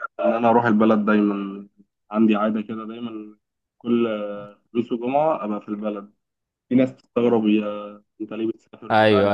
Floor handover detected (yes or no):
yes